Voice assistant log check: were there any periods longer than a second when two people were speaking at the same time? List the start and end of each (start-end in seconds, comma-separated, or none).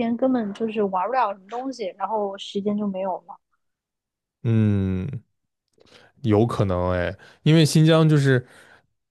none